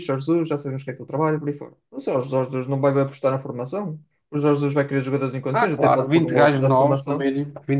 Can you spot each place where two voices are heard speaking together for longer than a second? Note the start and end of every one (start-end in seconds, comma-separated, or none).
5.5-7.3